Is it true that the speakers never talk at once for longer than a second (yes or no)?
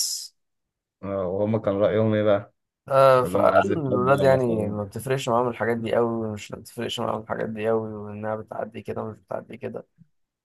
no